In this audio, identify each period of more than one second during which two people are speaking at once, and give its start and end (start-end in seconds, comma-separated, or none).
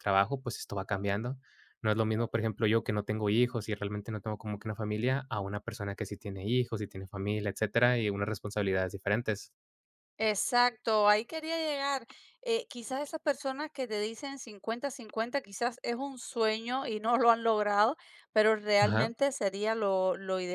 none